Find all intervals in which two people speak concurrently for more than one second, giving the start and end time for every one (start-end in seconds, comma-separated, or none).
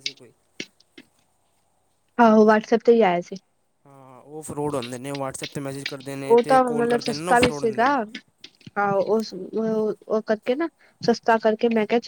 6.2-7.9